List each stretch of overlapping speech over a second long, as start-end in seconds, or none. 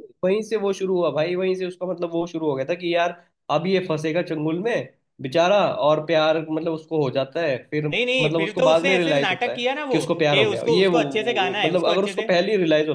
7.9-12.3